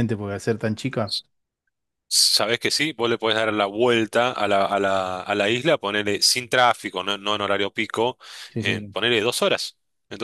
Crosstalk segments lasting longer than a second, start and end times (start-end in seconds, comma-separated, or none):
none